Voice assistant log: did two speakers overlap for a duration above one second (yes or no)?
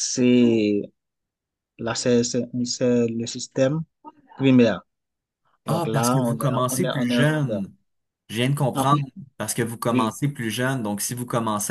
yes